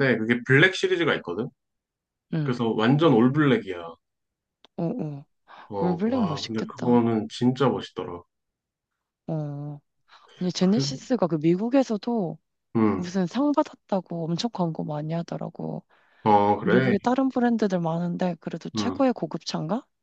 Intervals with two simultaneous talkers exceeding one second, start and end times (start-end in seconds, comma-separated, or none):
5.8-7.1